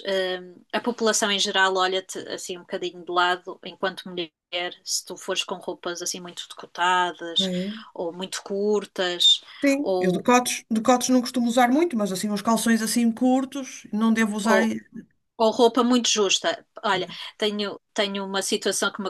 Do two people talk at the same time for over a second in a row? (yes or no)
no